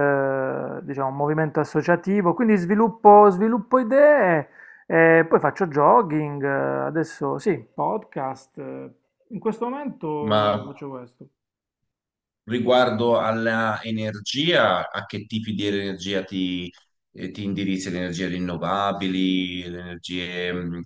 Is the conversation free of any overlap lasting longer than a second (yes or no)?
yes